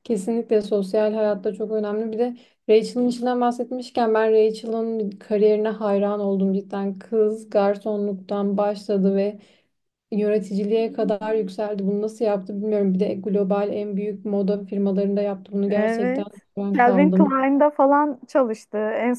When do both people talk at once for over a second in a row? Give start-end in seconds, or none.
15.7-17.3